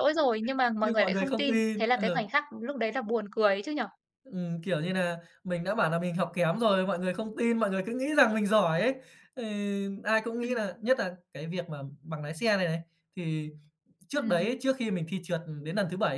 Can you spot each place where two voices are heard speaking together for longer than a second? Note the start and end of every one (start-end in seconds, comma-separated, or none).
0.8-2.2